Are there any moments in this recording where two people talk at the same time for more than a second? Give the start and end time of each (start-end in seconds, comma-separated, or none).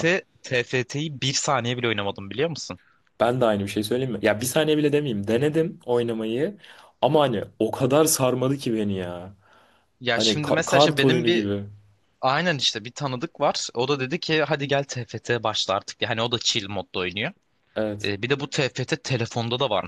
10.1-11.5